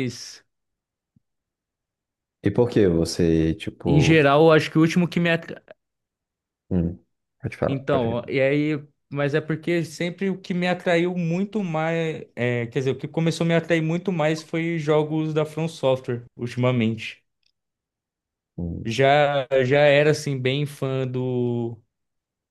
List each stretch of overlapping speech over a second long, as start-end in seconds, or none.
none